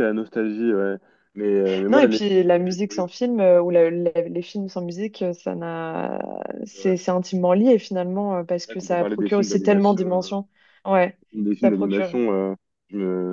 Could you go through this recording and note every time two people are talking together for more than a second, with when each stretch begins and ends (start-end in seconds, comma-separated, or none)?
8.6-10.4